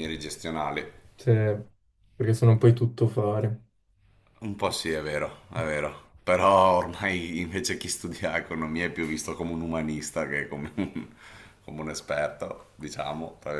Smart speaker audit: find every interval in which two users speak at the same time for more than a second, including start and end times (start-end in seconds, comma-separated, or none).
none